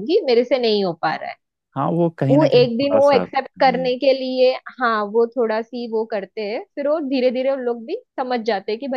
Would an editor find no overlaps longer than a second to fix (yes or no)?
no